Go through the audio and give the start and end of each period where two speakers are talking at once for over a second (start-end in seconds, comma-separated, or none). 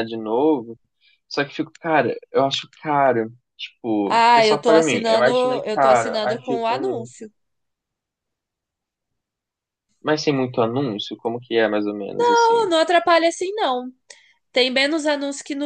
4.0-7.1